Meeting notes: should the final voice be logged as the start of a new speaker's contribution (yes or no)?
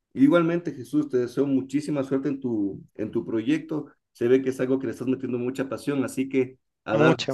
no